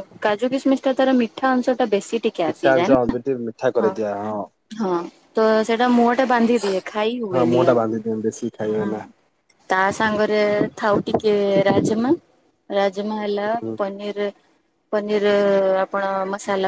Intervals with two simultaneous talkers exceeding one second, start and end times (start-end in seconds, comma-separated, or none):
7.3-8.9